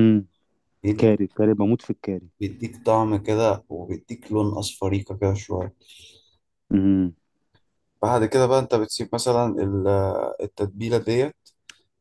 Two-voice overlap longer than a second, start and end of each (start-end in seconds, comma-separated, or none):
none